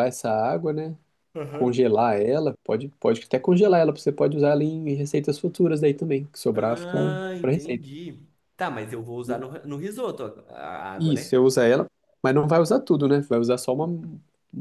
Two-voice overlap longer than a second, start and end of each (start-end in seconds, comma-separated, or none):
6.5-7.8